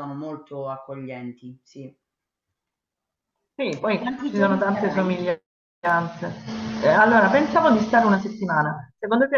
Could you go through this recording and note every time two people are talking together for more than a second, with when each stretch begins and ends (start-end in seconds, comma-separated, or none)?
3.8-5.2